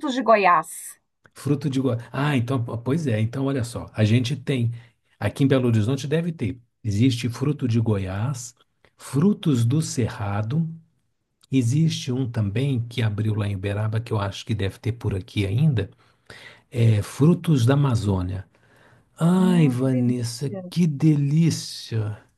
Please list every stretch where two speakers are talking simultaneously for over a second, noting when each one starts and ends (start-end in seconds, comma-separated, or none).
19.4-20.6